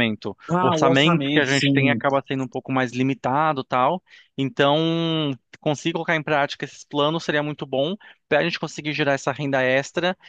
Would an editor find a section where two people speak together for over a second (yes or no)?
yes